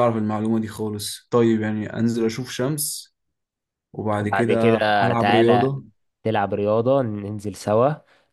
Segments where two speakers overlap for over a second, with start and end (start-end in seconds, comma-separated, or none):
4.2-5.7